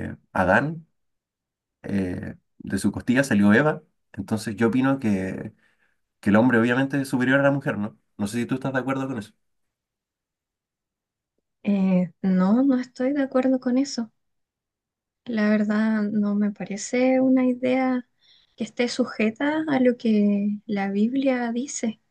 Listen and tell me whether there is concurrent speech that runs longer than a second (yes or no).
no